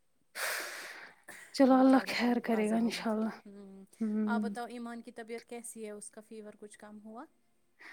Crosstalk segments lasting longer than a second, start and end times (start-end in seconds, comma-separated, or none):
1.8-3.4